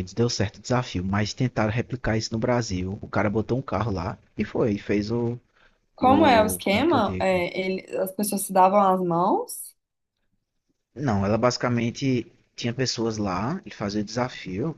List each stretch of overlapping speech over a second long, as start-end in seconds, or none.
6.0-7.4